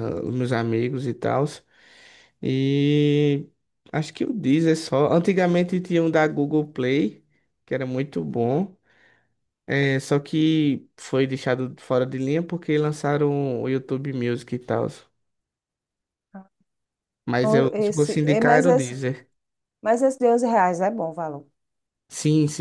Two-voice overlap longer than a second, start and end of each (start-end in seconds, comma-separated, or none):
17.4-19.0